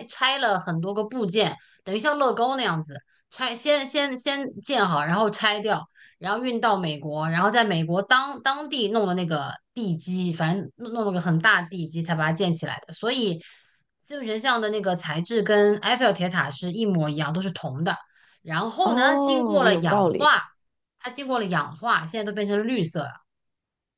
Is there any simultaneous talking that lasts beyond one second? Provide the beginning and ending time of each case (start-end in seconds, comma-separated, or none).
18.8-20.3